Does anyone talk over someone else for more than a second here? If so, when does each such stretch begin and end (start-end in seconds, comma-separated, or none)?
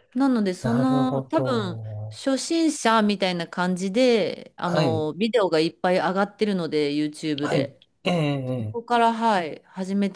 0.6-2.3